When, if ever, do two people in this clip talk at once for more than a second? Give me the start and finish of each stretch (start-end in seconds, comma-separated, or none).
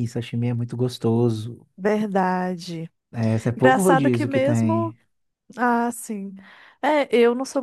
3.5-4.9